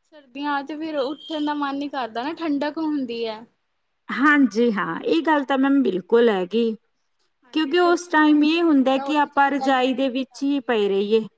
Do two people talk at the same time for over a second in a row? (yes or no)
yes